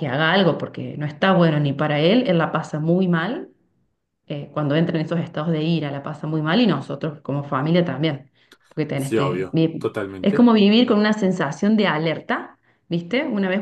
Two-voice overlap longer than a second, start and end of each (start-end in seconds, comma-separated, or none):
8.9-10.5